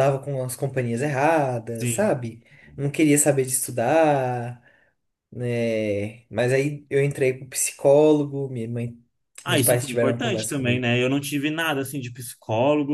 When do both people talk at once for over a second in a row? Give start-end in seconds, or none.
9.5-10.9